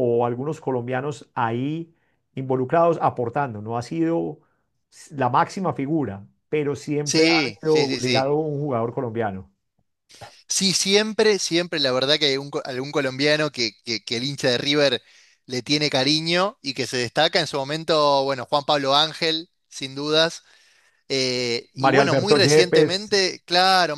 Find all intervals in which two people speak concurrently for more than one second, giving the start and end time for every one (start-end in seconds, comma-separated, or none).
7.0-8.3, 21.8-23.2